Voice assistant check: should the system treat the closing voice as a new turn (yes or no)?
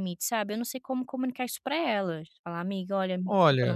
yes